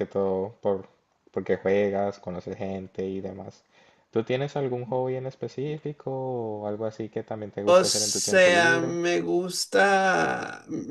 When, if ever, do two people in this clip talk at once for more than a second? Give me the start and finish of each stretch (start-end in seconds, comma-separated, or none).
7.6-9.0